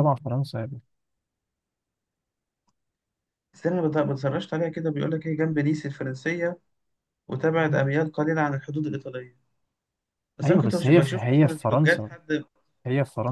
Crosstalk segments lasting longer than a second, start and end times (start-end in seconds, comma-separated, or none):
10.4-12.1